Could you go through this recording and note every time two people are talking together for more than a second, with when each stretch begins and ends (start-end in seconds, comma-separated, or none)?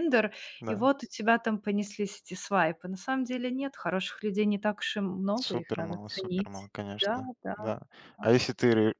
5.3-7.6